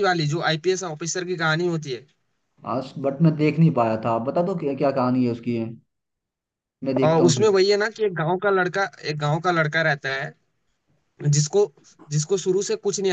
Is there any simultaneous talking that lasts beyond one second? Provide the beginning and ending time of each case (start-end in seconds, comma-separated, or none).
none